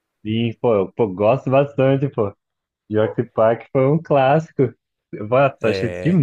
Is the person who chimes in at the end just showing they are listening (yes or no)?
yes